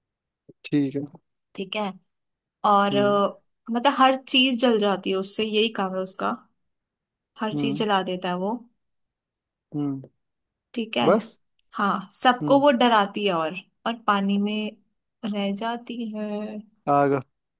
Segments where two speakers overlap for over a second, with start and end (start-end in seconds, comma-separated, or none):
none